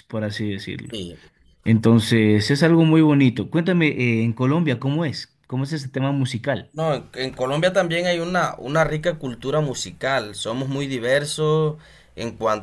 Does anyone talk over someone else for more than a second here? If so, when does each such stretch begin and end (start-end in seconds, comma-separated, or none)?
none